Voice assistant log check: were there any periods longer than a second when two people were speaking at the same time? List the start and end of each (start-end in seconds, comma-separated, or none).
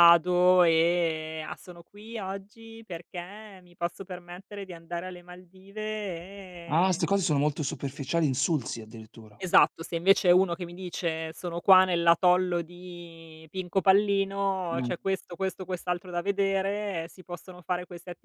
none